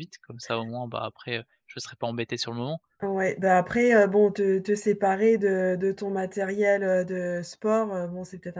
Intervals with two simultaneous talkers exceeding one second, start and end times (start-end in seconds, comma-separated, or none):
none